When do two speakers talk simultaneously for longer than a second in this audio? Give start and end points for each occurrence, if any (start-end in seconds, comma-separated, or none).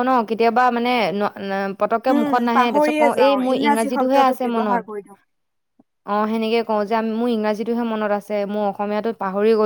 2.1-4.8